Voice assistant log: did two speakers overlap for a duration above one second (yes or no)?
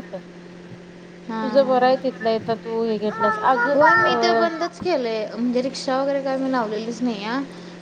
no